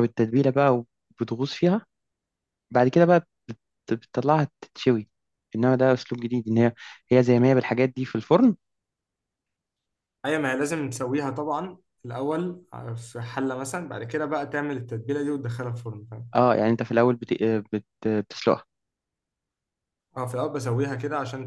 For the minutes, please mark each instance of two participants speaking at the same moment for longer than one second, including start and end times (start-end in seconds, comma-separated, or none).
none